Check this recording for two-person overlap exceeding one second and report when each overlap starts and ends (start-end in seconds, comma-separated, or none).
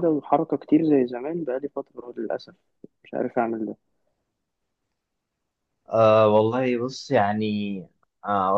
none